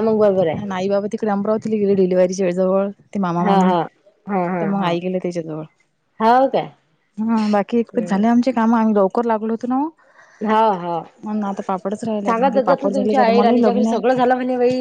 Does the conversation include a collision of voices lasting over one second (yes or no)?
yes